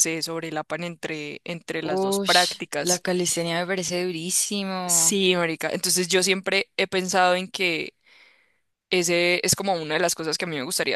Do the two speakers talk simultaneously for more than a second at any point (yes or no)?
yes